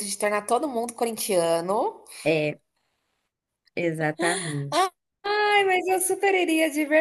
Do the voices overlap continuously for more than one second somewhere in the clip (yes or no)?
no